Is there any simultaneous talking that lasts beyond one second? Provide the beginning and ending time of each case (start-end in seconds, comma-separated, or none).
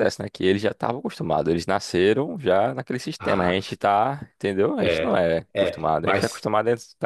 4.8-6.5